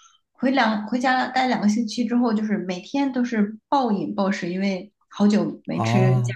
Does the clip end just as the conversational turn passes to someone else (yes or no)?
no